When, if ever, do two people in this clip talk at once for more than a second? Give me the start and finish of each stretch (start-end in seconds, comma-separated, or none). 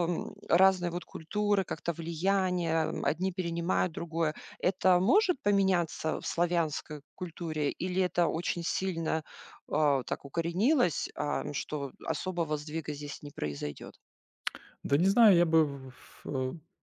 none